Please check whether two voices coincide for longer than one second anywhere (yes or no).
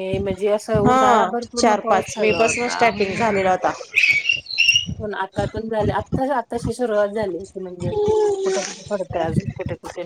yes